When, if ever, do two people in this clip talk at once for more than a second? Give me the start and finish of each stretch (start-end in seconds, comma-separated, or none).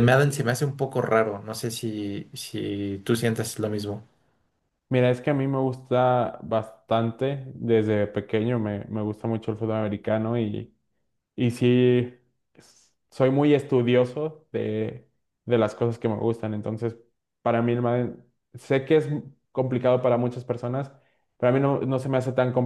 none